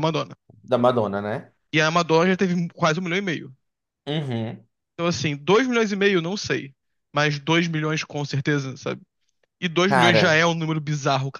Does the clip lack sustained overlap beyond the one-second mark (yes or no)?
yes